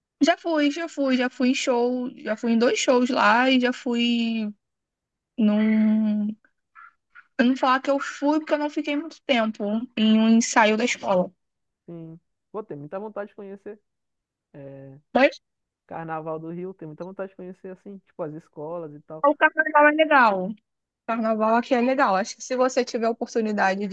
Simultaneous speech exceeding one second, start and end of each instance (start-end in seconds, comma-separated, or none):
none